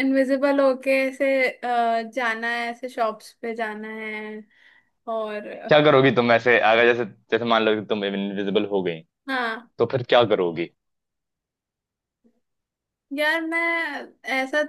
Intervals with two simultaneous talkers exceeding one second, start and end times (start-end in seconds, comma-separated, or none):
none